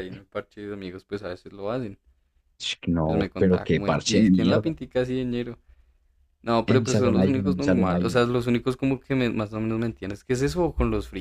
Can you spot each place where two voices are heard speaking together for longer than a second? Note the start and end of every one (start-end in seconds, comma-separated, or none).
3.0-4.8, 6.7-8.2